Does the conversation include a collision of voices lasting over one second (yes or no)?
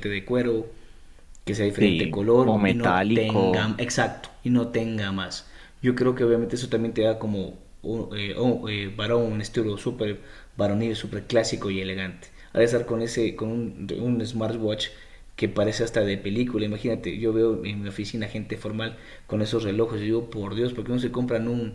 yes